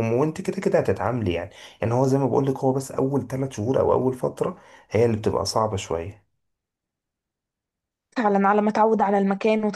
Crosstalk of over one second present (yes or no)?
no